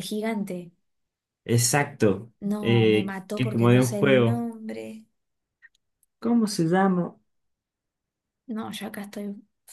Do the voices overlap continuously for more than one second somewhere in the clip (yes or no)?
yes